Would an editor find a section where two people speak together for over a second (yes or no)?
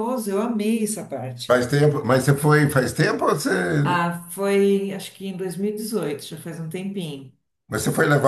no